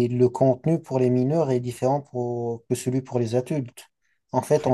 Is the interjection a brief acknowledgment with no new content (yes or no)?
yes